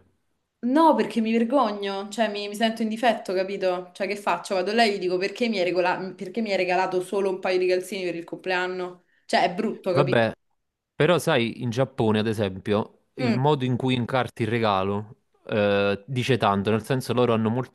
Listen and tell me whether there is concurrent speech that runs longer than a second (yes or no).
no